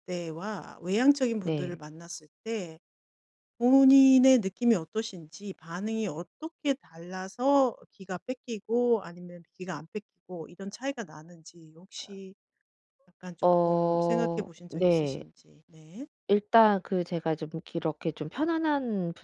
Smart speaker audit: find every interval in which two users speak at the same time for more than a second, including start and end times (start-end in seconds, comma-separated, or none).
13.4-15.2